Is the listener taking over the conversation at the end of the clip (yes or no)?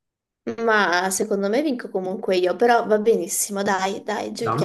yes